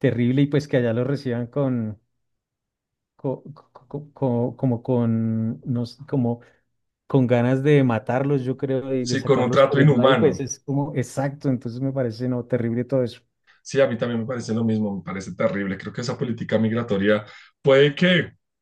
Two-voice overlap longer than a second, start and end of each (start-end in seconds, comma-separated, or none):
9.1-10.4